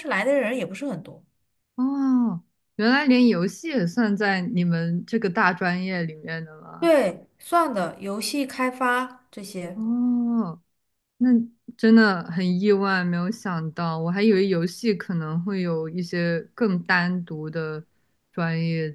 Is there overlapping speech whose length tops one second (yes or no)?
no